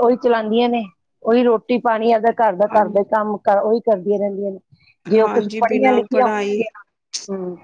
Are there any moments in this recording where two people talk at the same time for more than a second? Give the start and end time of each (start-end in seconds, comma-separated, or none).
5.2-6.6